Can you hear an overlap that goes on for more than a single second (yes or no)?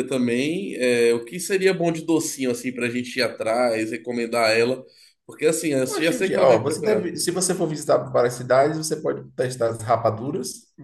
yes